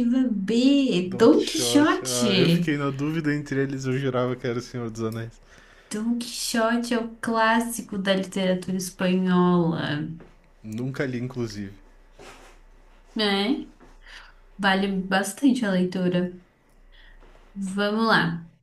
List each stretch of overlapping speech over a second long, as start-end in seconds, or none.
1.0-2.8